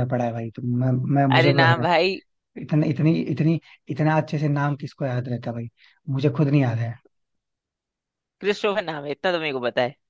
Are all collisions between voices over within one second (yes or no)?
yes